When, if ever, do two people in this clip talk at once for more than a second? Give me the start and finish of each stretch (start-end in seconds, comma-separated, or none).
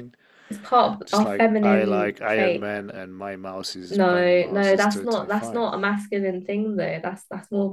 1.1-2.7, 3.9-5.7